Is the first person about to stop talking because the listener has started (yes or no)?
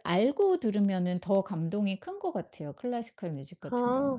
yes